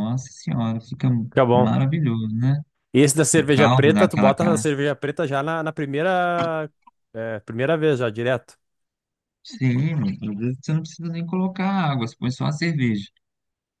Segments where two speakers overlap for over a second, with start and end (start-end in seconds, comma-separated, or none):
3.3-4.6